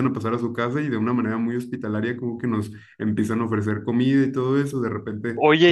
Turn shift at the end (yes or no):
yes